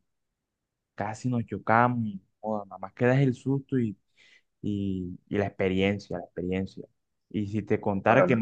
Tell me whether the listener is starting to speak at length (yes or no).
no